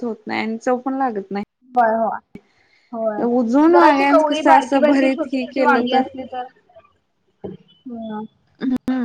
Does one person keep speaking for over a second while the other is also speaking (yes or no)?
yes